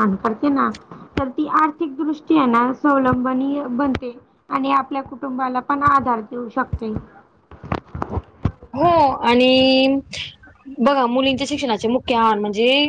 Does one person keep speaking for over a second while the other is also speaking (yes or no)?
no